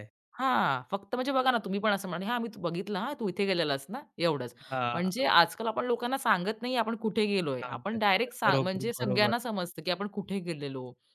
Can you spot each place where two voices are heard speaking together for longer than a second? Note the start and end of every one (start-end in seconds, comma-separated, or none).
7.6-9.3